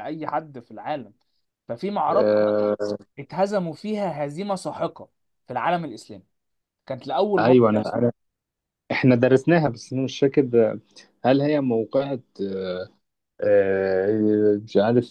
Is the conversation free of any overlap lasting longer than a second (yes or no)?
yes